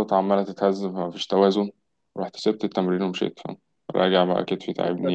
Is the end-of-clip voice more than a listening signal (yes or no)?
yes